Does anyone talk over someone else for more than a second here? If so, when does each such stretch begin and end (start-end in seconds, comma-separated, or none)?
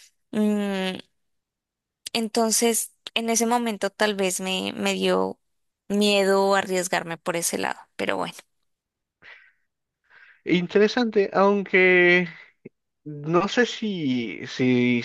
none